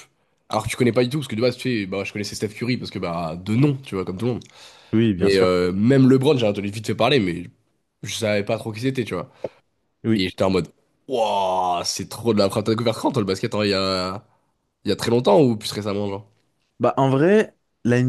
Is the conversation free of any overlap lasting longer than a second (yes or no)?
yes